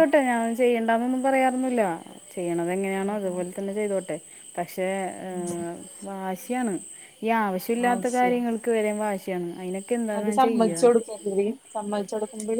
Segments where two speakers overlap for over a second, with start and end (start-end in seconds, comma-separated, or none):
none